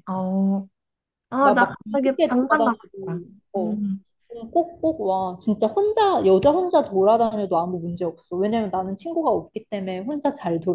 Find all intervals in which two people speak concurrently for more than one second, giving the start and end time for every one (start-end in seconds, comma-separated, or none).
1.4-2.8